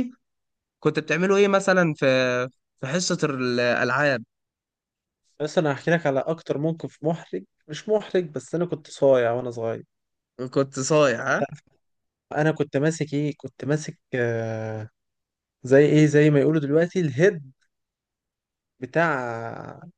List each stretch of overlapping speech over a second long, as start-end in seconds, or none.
none